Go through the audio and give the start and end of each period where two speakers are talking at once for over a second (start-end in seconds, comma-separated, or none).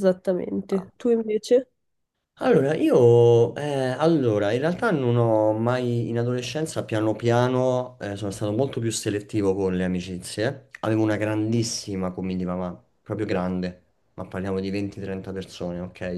none